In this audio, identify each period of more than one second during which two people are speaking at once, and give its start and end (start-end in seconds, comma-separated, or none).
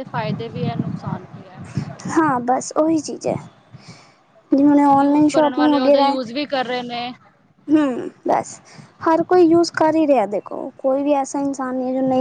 5.0-6.2